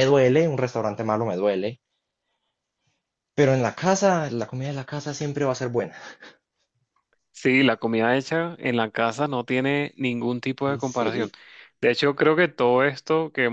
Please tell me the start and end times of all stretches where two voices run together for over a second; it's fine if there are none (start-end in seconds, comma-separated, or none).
none